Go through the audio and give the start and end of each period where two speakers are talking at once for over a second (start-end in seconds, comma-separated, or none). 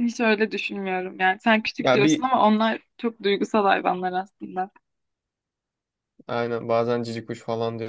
none